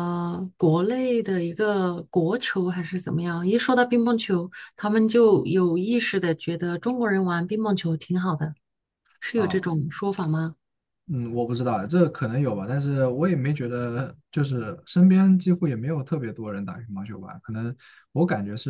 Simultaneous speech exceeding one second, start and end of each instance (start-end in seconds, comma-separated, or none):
none